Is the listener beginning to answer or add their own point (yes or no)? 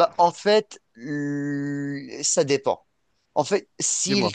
no